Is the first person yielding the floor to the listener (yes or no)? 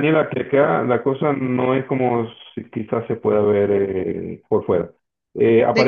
no